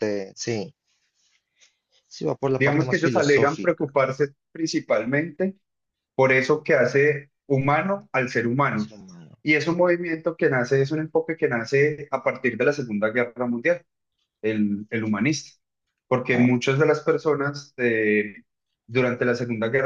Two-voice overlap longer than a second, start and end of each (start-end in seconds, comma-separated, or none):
2.6-4.0